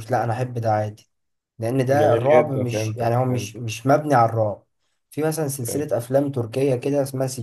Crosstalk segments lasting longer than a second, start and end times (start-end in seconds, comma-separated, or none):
1.9-3.6